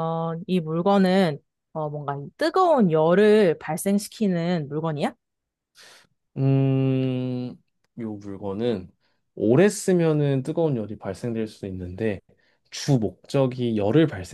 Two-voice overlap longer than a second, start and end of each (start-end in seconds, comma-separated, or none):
none